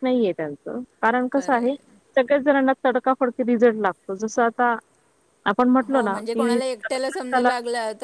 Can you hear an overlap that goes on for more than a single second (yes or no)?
yes